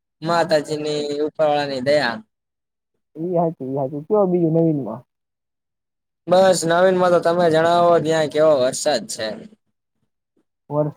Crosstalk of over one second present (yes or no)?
no